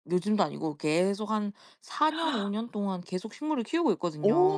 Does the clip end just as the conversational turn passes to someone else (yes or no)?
yes